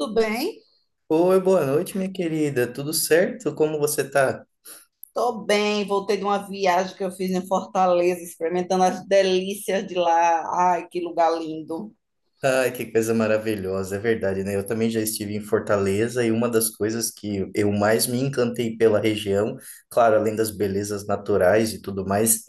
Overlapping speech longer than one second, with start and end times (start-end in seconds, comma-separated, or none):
none